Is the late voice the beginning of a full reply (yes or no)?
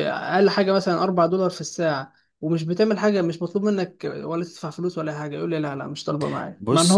no